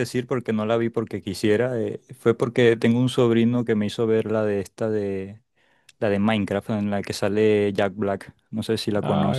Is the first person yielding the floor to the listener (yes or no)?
yes